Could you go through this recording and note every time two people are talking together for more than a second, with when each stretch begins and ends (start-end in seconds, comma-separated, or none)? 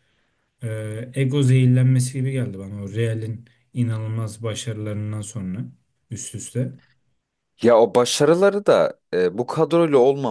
none